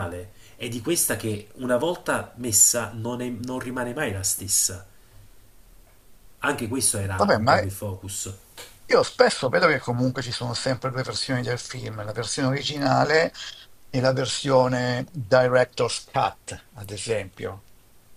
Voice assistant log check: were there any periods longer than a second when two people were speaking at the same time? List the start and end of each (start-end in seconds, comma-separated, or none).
none